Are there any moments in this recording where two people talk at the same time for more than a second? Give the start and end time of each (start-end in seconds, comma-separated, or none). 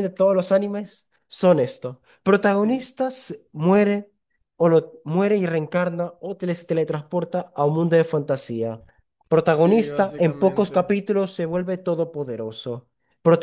9.5-10.9